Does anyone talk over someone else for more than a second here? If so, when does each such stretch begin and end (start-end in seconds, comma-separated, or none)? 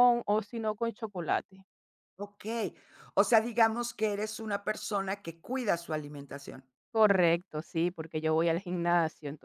none